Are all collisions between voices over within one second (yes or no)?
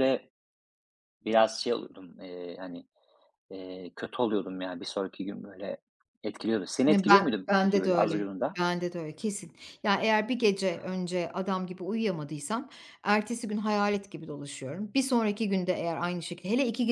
no